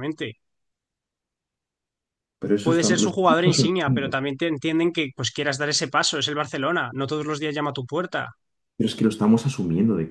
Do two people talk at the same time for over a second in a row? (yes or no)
yes